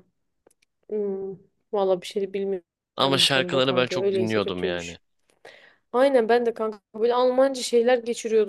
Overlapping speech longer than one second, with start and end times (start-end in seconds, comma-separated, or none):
3.0-5.0